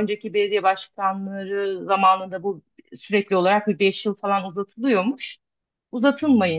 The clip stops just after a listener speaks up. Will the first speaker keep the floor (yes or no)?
yes